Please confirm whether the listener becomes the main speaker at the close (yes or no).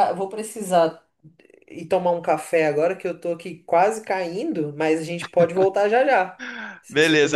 yes